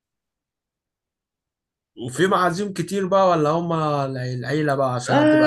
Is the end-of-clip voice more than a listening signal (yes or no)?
yes